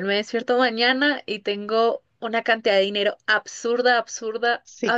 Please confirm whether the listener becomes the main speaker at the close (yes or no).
no